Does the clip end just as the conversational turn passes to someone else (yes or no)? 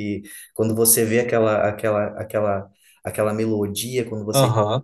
no